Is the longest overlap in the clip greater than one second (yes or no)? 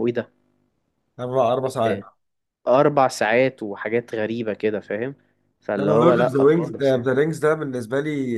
yes